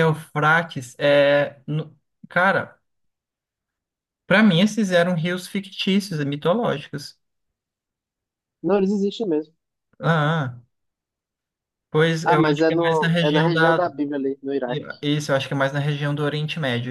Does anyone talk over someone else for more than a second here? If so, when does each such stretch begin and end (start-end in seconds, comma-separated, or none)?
12.2-13.8